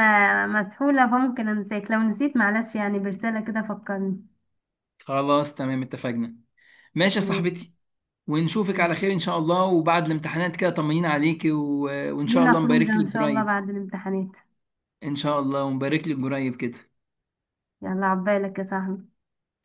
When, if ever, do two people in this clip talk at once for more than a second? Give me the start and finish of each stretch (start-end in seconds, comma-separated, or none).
12.2-13.6